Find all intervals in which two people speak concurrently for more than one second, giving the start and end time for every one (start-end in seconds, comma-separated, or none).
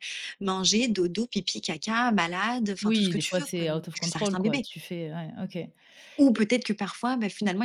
2.8-4.7